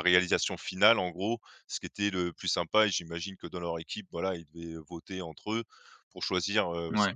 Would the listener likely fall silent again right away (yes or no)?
yes